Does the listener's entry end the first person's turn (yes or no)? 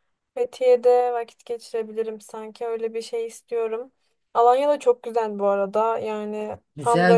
yes